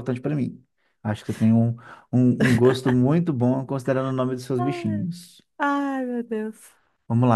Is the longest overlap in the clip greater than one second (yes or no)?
no